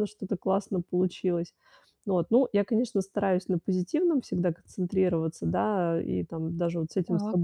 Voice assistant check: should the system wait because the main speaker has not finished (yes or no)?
yes